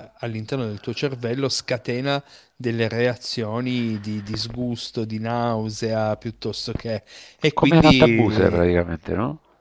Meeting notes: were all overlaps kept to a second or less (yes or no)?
no